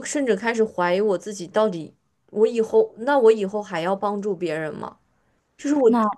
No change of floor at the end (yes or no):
yes